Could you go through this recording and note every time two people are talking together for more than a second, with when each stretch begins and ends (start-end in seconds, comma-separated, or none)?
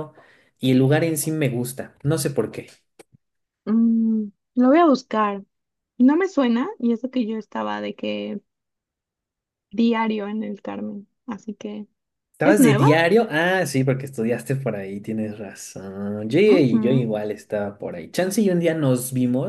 none